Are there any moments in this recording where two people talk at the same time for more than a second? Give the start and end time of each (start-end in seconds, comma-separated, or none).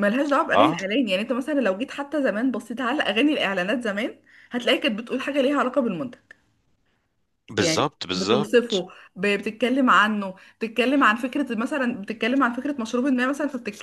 7.6-8.8